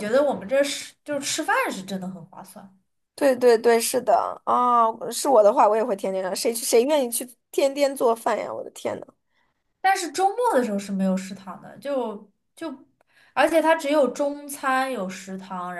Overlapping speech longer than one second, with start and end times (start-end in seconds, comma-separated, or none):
none